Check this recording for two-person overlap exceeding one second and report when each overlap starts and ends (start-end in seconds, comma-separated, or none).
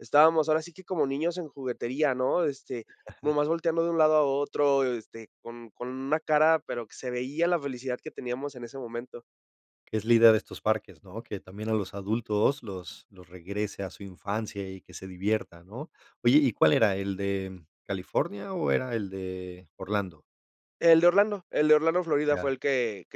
none